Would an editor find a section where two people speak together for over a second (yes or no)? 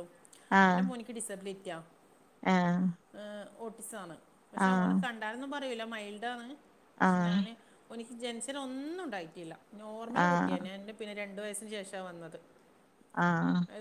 no